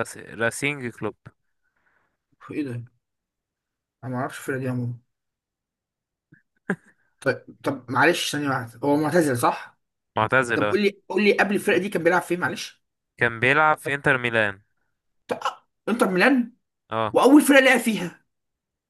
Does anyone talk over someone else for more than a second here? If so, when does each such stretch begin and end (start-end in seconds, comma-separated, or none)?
none